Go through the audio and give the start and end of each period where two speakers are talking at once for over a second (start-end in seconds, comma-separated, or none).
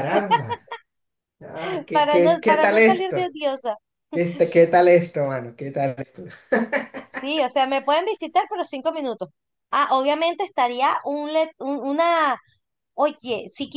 1.6-3.3